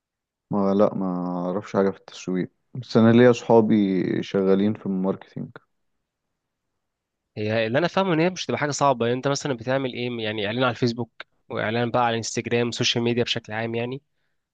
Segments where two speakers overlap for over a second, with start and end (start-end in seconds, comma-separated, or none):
none